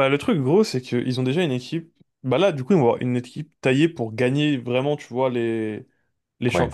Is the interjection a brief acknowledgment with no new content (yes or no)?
yes